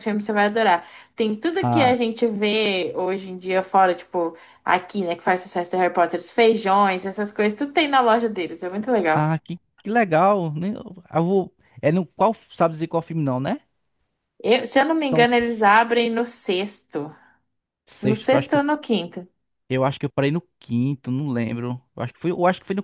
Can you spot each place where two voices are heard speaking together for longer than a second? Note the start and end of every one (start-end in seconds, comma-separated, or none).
none